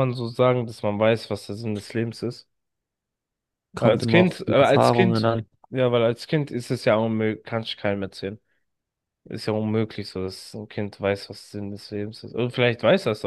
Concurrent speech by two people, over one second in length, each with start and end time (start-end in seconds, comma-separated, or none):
3.8-5.3